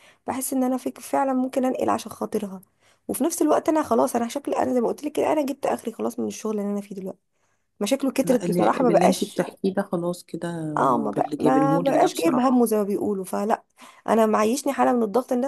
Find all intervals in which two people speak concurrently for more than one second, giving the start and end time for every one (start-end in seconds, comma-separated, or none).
8.2-9.4, 11.2-12.5